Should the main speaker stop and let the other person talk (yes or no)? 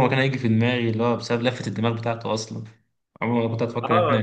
yes